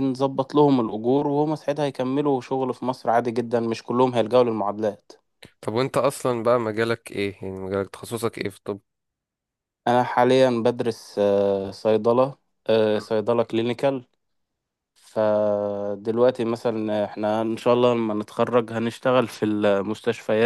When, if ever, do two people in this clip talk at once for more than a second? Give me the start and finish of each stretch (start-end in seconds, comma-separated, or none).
none